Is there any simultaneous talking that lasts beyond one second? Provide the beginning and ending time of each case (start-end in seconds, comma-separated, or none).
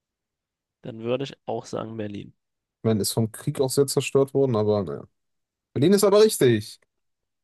none